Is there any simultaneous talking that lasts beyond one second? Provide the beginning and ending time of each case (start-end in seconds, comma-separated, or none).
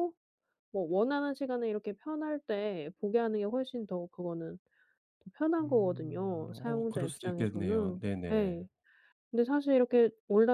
5.6-8.6